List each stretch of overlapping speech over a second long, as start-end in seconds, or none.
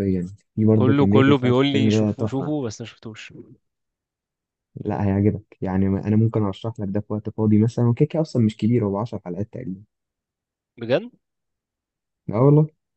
0.8-2.5